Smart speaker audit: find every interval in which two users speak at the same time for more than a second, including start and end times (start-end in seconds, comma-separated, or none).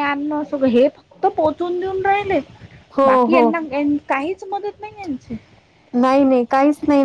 none